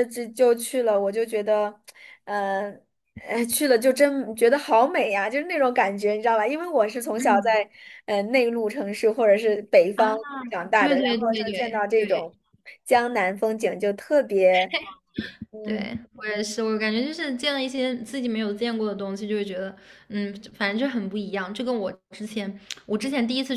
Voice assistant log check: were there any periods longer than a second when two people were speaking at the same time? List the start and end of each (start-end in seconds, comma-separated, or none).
10.8-12.3